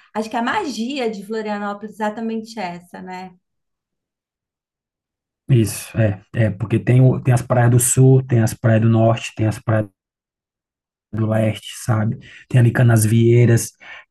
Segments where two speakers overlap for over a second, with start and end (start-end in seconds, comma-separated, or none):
none